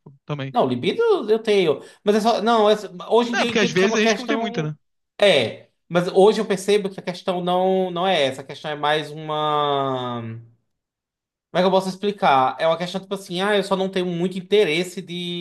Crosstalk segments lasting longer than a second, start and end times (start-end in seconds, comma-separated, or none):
3.3-4.7